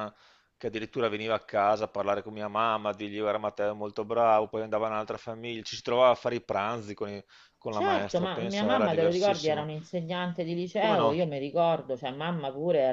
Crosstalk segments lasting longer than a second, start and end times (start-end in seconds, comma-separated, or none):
7.7-9.7